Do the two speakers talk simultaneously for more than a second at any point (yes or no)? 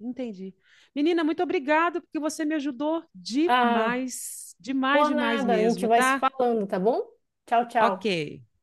yes